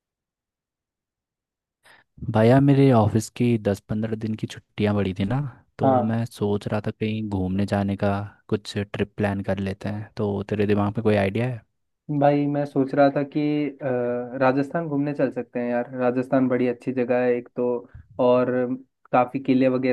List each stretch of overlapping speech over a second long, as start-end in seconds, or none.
none